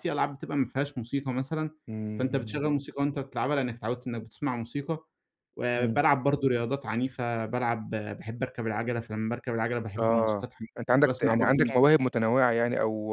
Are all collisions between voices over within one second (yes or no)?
no